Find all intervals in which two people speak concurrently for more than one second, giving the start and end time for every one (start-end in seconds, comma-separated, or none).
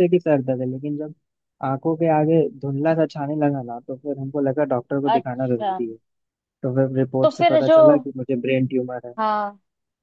none